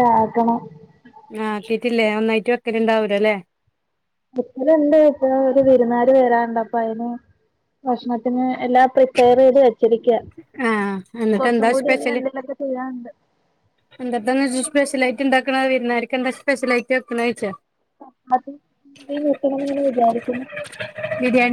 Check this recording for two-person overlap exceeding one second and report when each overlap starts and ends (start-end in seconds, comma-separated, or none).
none